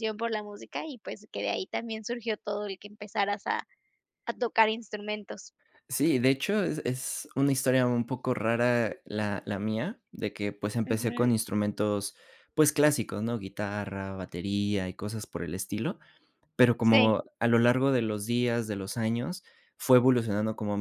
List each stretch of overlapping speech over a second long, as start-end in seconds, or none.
none